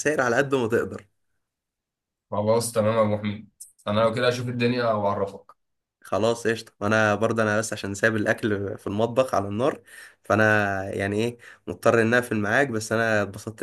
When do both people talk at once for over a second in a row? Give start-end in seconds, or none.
none